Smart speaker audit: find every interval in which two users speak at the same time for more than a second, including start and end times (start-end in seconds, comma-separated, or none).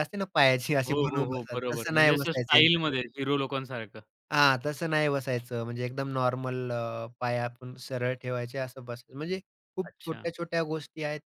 0.9-3.0